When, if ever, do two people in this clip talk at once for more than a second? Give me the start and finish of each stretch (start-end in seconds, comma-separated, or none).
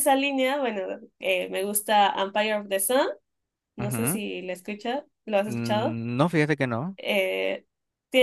none